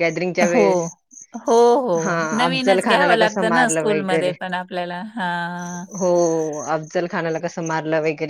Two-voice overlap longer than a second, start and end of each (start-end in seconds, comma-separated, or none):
2.4-4.3